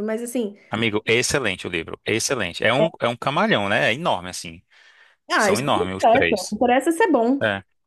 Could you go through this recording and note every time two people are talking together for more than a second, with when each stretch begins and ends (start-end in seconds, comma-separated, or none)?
5.4-6.6